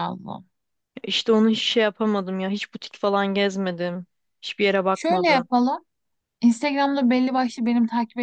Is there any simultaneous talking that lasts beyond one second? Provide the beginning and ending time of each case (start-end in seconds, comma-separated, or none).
none